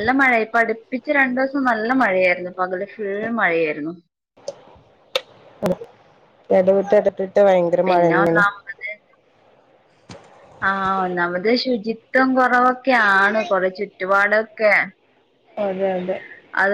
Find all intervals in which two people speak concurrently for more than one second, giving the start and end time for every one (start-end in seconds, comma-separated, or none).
none